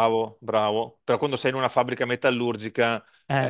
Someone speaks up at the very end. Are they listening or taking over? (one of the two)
listening